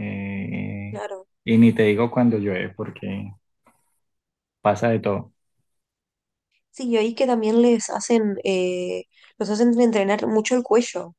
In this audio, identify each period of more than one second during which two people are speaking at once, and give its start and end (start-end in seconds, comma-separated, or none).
none